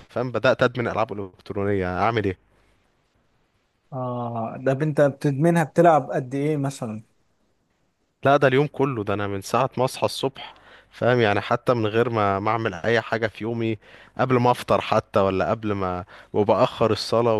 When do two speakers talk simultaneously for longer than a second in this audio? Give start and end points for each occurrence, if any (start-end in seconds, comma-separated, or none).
none